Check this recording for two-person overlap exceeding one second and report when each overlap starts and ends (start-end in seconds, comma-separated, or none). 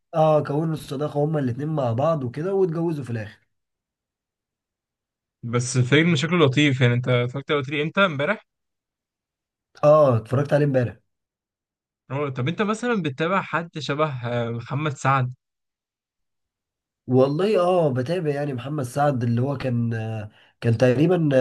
none